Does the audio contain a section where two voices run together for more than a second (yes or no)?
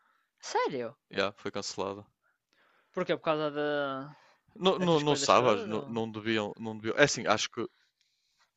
yes